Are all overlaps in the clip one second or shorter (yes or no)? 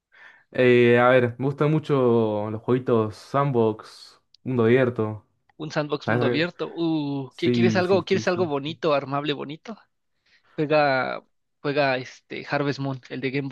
no